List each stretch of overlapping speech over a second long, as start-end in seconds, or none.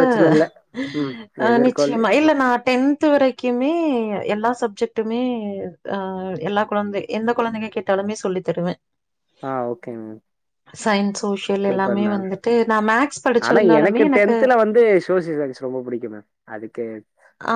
none